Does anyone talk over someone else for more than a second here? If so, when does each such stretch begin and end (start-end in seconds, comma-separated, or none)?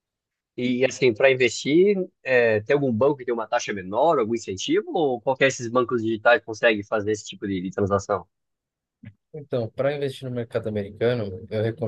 none